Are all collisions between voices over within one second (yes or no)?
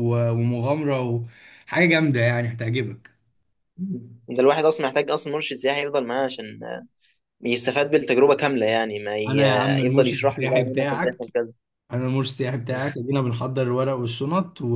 no